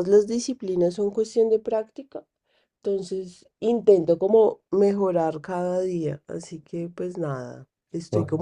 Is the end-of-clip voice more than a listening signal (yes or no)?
no